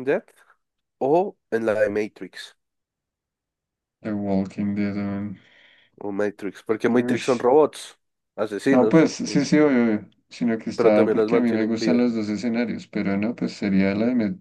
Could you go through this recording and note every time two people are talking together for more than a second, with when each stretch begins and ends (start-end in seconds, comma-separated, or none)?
10.8-12.1